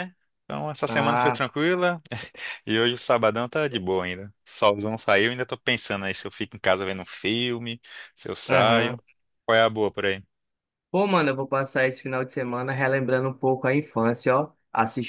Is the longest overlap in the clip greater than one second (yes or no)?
no